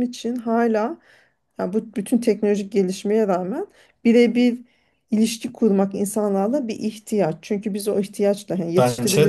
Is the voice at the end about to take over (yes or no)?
no